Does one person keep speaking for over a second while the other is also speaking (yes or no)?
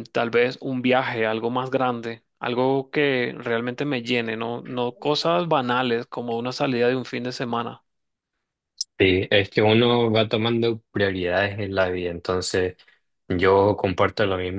no